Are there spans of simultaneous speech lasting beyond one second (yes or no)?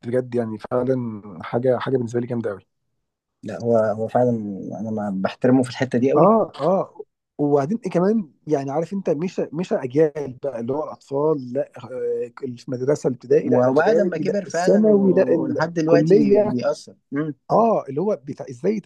yes